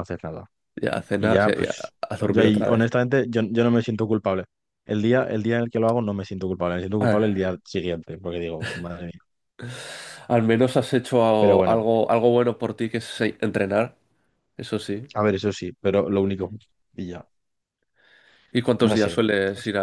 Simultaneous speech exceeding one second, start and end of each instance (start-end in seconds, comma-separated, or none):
1.2-2.9